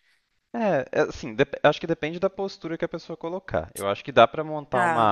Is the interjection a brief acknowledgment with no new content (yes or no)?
yes